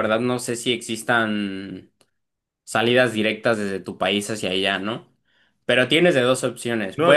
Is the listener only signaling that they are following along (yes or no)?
no